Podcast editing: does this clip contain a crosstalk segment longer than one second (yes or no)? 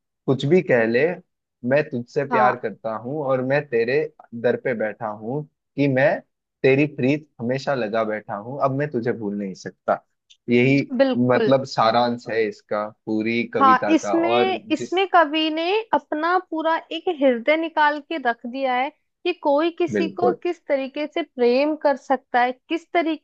yes